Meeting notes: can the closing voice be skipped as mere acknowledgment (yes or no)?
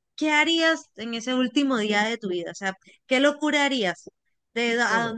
yes